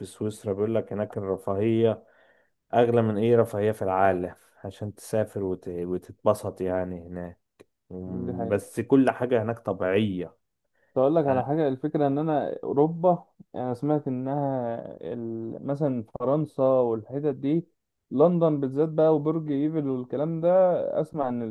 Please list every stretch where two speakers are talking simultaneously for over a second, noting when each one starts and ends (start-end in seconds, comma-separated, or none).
none